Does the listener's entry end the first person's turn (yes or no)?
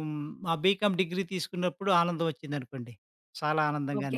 yes